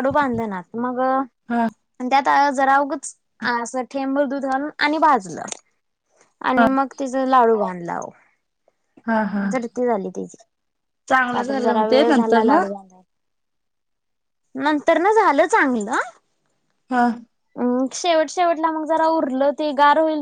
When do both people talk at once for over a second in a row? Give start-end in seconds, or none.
11.3-12.6